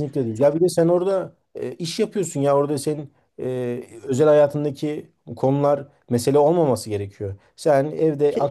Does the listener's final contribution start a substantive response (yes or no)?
no